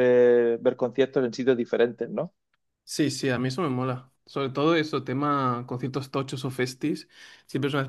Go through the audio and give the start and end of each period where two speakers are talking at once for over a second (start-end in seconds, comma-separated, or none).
none